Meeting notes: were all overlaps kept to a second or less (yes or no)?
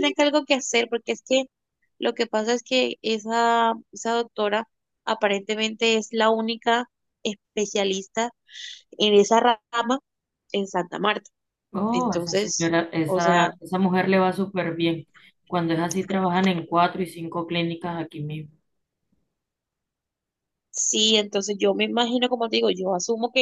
no